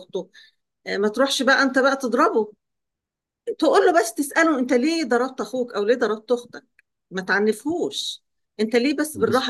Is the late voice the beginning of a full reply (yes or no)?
no